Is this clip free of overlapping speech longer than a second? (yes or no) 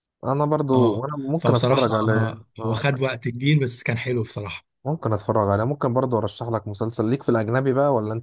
no